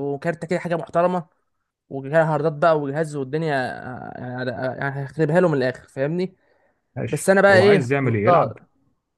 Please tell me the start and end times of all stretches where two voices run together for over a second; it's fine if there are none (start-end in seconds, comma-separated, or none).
7.1-8.6